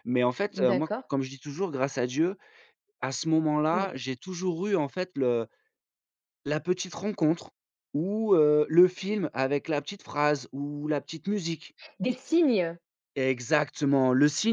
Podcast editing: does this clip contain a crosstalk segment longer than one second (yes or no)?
no